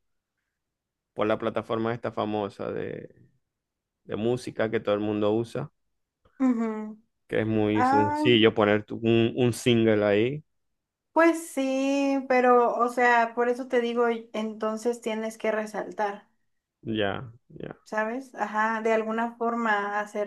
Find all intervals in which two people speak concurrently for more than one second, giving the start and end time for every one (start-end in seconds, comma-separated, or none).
none